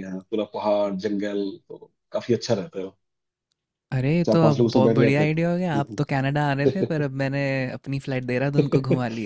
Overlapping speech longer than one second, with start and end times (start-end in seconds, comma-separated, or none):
4.3-6.0